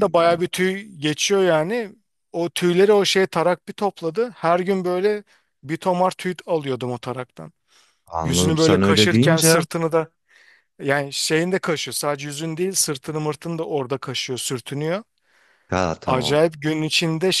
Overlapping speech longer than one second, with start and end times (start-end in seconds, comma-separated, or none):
8.2-9.6